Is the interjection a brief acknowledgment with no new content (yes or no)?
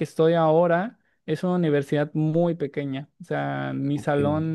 yes